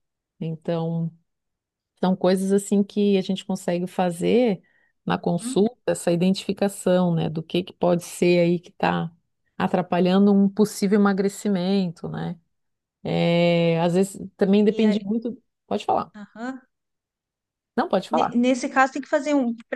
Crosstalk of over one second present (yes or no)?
no